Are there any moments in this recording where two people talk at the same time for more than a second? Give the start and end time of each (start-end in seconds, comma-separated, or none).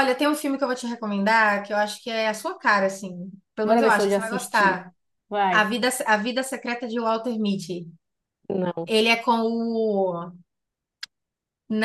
3.6-4.9